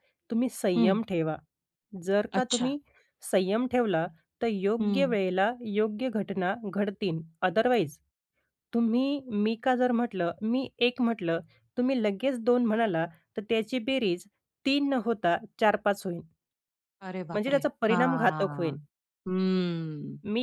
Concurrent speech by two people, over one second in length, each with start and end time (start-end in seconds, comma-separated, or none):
17.3-18.8